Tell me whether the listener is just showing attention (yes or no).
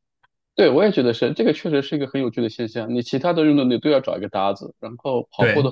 yes